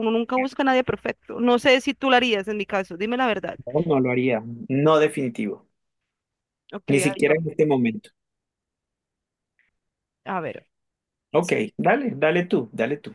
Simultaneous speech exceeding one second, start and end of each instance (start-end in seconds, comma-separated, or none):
none